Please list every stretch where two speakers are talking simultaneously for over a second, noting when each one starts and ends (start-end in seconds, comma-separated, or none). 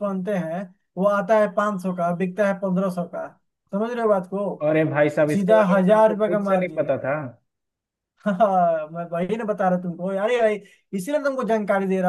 5.3-6.9